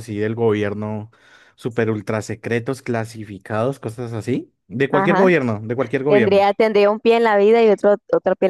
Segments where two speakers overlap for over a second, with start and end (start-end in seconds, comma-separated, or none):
none